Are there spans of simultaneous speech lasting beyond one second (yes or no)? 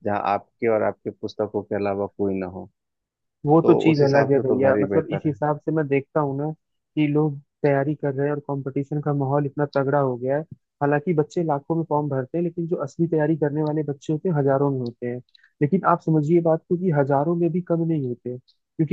yes